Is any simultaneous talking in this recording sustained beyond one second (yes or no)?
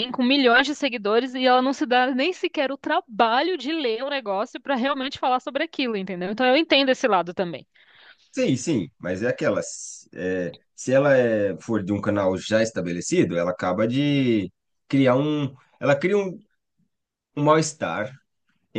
no